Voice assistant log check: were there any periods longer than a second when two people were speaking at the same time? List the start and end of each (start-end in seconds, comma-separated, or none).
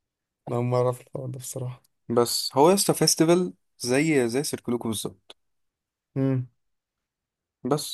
none